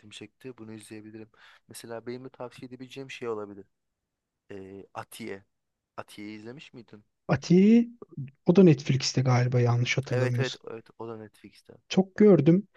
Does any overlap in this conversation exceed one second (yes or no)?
no